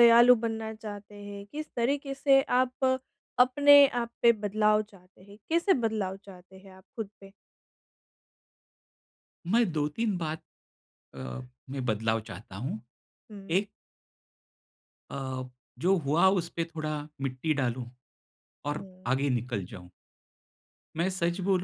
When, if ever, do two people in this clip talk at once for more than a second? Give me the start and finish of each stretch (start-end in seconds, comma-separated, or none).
none